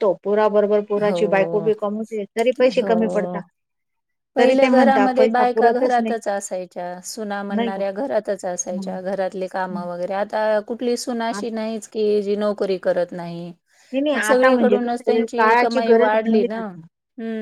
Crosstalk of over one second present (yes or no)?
yes